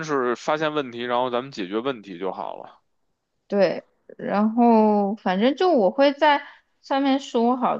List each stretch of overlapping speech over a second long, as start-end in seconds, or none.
none